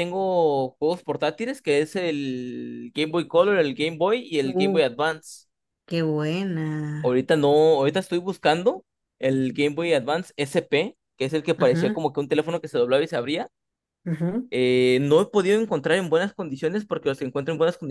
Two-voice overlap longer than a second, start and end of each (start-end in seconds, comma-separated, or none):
none